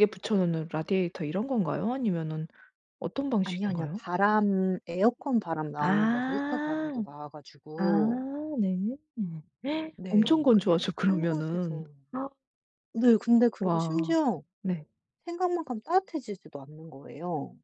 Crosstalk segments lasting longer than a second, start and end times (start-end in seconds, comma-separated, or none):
5.8-7.0, 10.1-11.8